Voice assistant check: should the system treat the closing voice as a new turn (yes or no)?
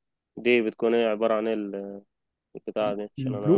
yes